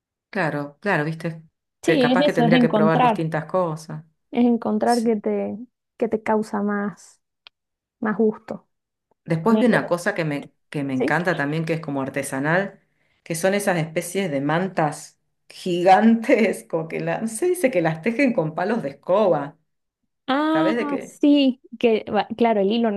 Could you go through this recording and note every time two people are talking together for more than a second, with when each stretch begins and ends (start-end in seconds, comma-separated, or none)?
1.8-3.2